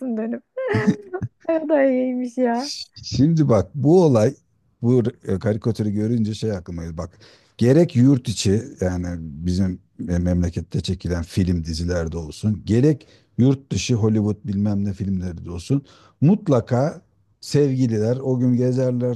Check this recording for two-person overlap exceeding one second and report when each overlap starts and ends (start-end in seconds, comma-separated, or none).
none